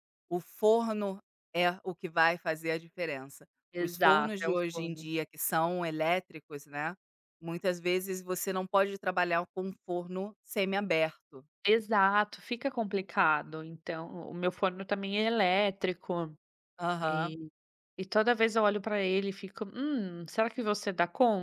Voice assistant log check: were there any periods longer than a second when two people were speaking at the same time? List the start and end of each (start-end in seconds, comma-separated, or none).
3.7-5.0